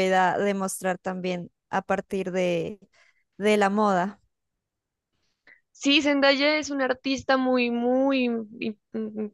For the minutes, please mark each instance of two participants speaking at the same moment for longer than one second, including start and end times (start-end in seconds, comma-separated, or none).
none